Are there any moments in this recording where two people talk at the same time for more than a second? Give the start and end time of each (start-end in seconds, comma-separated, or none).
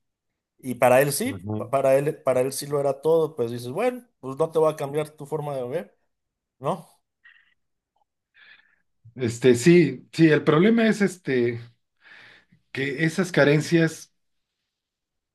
none